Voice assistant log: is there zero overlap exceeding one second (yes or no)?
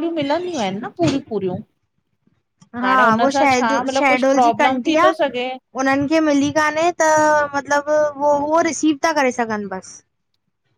no